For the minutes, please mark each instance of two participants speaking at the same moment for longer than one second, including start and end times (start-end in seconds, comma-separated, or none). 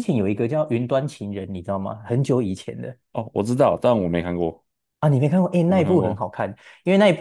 none